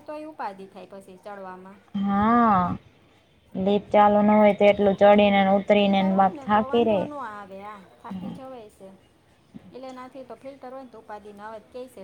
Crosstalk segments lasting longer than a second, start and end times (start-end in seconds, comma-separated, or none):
4.8-7.0